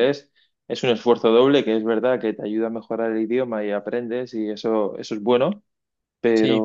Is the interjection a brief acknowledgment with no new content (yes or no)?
yes